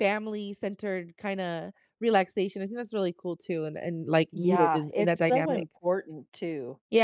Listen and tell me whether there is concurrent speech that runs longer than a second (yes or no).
yes